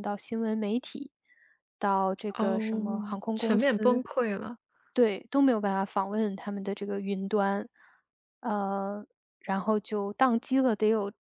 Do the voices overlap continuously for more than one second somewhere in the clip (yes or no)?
yes